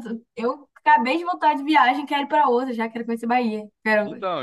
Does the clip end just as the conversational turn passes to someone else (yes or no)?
yes